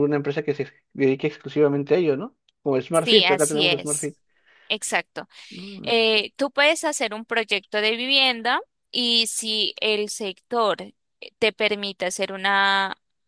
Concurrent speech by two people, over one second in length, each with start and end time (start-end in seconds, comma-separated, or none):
2.9-4.1